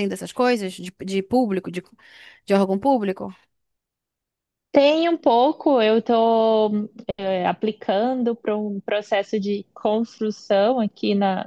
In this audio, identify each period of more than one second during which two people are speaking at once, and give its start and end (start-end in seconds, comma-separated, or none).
none